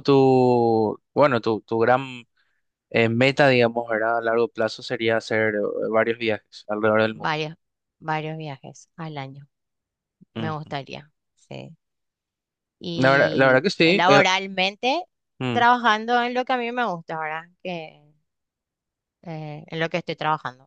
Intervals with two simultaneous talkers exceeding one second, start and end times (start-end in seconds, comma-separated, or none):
12.9-14.2